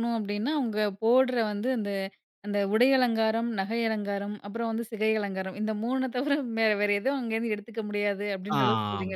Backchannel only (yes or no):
no